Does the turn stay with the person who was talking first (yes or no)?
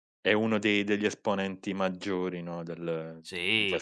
no